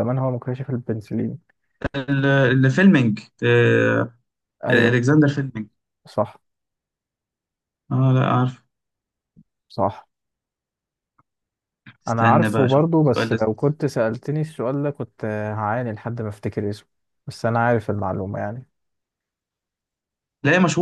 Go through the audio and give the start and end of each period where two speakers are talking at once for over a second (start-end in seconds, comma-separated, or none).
12.1-13.7